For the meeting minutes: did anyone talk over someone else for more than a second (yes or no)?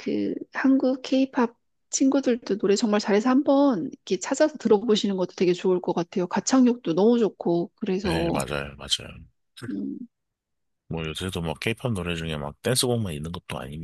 no